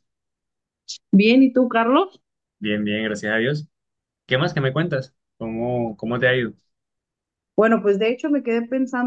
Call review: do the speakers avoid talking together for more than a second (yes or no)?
yes